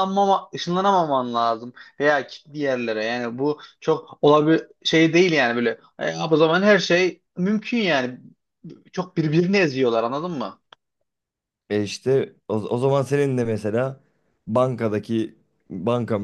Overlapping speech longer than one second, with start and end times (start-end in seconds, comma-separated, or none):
none